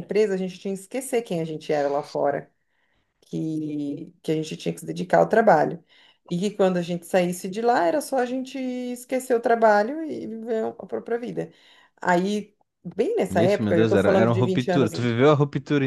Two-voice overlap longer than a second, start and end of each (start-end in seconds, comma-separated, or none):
13.3-15.2